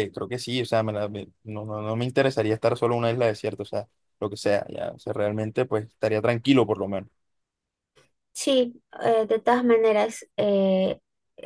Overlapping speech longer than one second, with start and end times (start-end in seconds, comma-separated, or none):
none